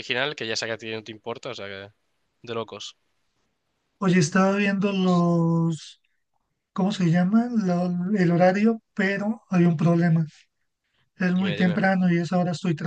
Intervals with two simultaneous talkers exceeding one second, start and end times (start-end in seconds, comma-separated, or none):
none